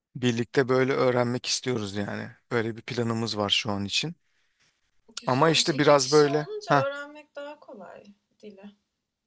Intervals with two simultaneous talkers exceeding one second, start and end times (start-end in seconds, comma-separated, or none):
5.2-6.8